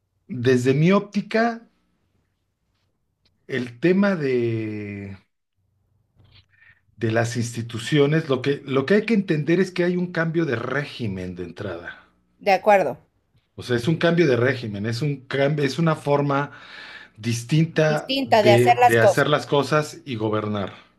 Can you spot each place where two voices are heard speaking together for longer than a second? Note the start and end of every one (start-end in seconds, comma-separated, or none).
17.9-19.3